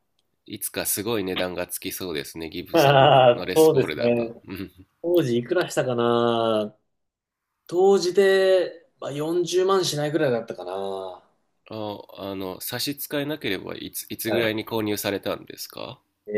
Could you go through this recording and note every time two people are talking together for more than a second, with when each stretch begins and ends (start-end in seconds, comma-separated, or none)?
2.7-4.4